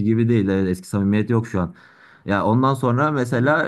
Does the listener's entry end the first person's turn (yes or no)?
no